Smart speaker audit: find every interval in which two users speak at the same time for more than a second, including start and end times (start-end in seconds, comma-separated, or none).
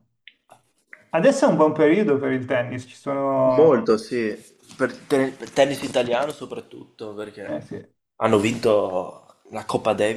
none